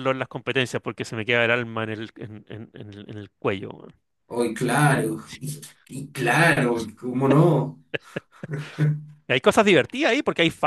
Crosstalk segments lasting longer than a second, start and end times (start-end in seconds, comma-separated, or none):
none